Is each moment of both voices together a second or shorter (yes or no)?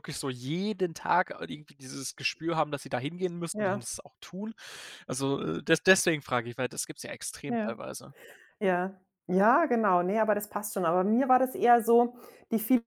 yes